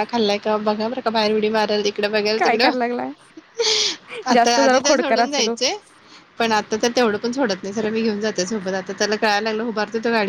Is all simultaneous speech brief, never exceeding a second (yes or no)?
no